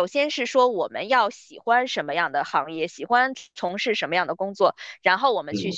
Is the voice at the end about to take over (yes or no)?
no